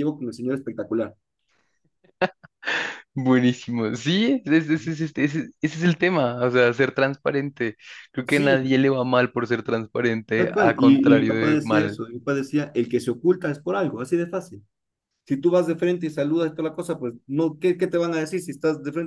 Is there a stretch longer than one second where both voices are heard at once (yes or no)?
yes